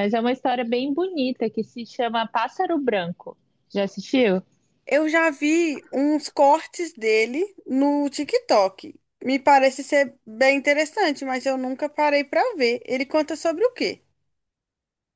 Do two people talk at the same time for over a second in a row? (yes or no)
no